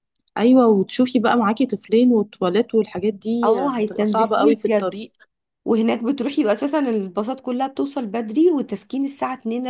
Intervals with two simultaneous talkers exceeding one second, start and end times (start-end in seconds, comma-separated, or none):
3.4-5.0